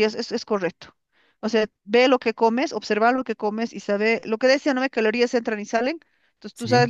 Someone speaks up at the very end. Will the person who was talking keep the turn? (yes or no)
yes